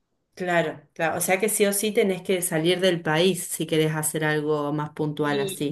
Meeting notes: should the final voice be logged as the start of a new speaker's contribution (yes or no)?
yes